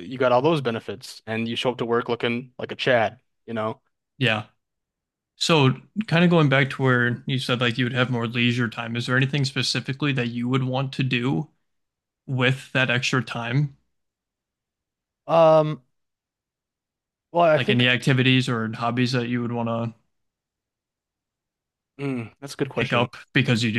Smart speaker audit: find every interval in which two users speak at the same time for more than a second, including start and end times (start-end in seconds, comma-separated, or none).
none